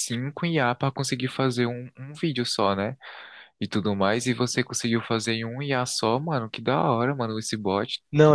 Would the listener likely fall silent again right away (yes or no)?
no